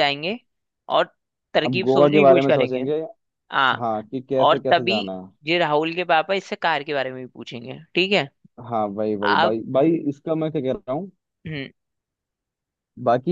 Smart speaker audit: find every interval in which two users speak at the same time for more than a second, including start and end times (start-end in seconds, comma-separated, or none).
1.6-2.9